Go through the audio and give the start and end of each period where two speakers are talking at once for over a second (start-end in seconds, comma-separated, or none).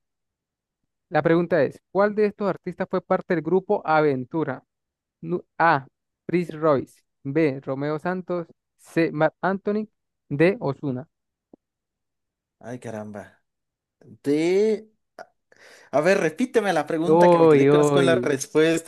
17.0-18.4